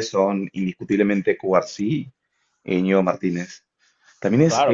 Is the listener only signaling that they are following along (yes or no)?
no